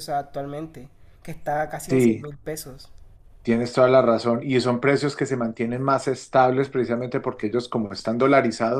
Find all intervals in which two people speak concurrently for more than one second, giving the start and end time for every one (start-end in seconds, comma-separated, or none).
none